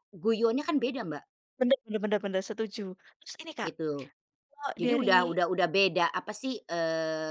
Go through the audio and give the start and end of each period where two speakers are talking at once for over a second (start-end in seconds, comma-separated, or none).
none